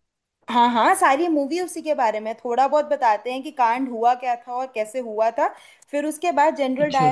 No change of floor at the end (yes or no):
yes